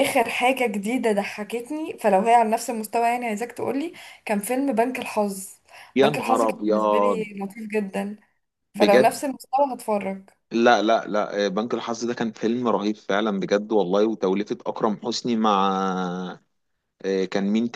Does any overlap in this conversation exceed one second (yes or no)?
yes